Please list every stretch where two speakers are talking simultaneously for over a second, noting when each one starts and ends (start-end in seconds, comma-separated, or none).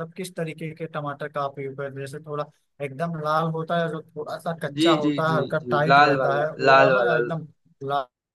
4.8-7.2